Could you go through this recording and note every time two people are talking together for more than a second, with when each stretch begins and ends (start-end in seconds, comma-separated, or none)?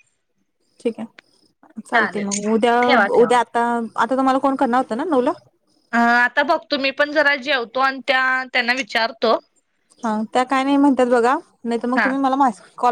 none